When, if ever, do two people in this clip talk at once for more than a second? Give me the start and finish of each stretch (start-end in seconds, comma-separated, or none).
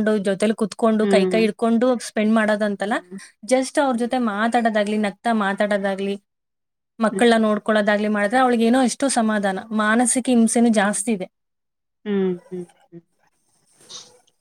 none